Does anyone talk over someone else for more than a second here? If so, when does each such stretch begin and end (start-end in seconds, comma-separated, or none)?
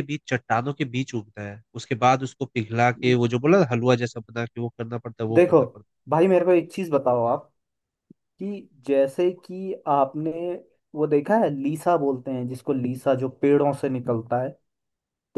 none